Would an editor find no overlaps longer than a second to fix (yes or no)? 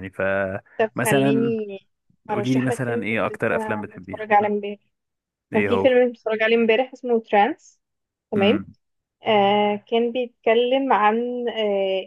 no